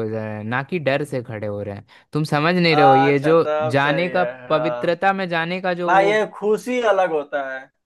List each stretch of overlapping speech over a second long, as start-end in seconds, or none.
2.7-4.9